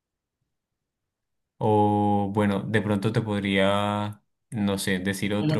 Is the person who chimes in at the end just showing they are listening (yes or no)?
no